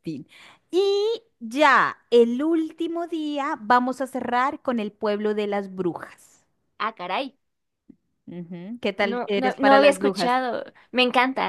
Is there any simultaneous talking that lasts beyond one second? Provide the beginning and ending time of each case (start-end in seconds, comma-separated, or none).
9.0-10.3